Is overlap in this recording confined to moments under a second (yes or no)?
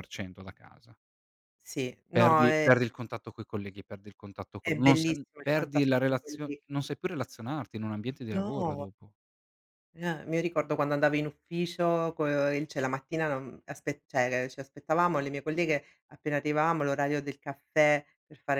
no